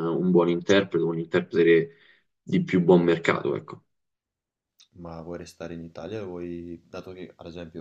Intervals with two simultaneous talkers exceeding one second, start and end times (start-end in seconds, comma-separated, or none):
none